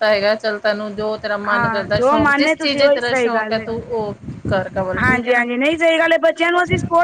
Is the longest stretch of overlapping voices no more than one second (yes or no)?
no